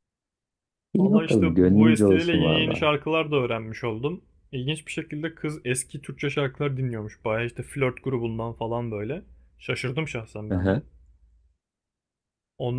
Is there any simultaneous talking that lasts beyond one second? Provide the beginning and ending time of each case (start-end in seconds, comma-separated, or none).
1.0-2.9